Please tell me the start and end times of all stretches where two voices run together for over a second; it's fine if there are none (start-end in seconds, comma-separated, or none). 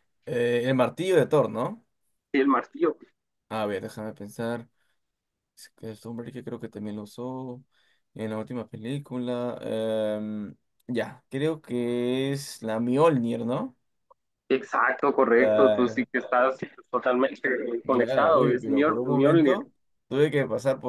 17.8-19.7